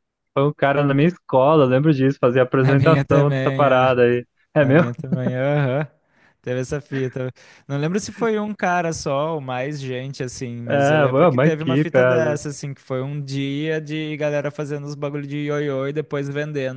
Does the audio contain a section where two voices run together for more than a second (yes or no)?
yes